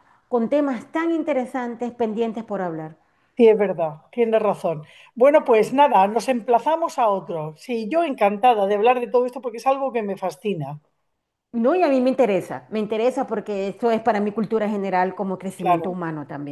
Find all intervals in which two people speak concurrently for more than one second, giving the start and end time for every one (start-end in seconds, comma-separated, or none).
none